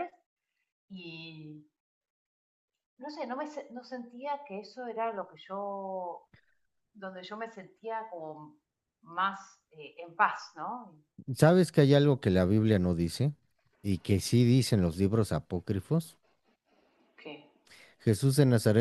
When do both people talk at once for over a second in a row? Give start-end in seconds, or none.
none